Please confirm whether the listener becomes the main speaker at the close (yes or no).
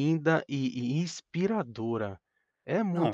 yes